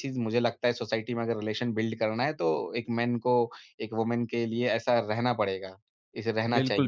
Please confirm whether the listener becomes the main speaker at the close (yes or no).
yes